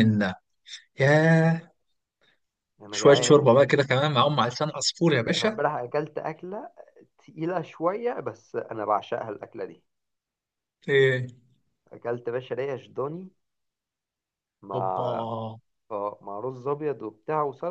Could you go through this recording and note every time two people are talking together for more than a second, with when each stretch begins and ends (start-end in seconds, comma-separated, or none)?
none